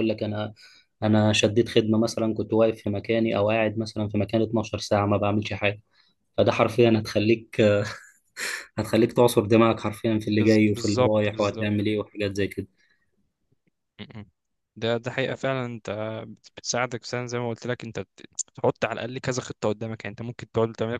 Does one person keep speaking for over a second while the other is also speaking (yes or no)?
yes